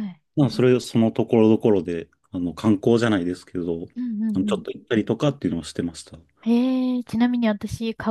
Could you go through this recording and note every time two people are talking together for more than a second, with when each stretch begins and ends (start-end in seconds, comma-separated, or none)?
none